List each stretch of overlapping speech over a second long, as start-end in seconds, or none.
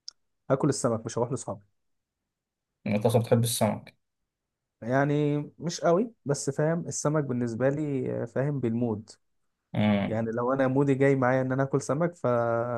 none